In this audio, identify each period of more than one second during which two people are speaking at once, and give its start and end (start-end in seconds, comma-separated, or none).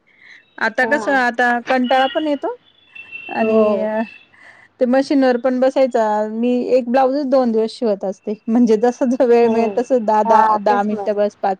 9.4-11.0